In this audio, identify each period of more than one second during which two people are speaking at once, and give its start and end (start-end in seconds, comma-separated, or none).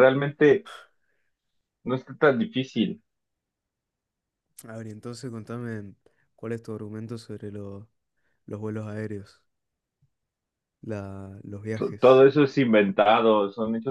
none